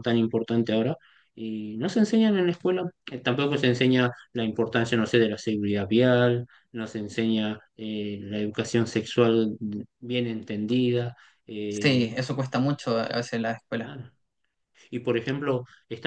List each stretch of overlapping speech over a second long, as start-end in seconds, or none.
none